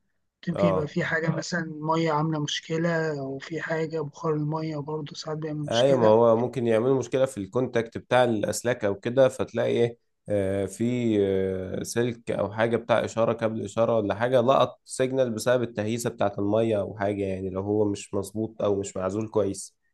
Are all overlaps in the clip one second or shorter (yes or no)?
yes